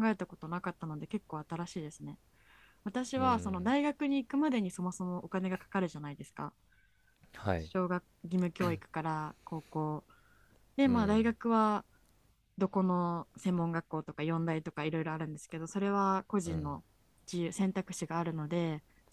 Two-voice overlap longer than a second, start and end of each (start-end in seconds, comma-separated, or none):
none